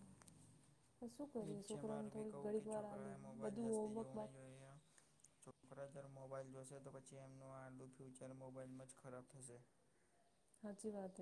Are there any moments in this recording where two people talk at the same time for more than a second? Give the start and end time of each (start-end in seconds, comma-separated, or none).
1.4-4.3